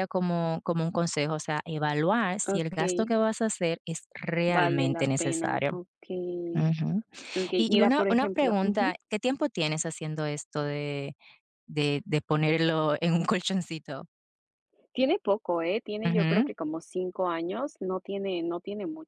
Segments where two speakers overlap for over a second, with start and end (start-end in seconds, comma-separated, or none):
4.5-5.7, 7.5-8.9